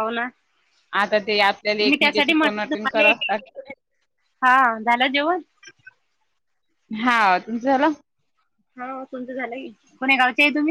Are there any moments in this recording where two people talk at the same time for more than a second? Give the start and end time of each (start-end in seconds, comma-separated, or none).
1.8-3.2